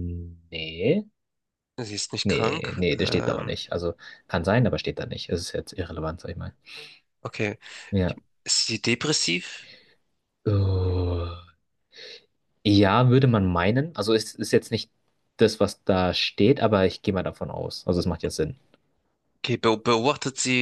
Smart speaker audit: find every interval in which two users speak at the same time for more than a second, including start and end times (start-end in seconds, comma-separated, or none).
2.2-3.6